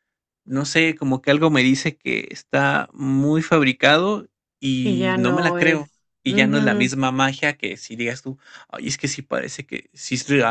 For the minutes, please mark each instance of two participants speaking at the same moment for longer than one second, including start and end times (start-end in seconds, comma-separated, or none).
4.8-6.9